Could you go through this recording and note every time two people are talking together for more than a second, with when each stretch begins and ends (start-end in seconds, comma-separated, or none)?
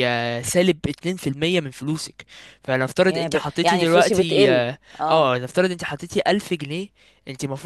3.1-5.3